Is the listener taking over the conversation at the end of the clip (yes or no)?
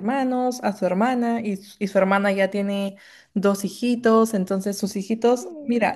no